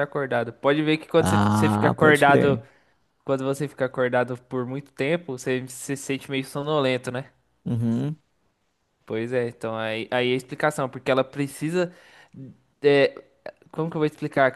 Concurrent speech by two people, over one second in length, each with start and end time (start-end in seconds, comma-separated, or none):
1.2-2.6